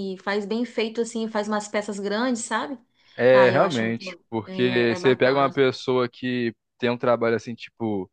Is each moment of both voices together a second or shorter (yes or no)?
no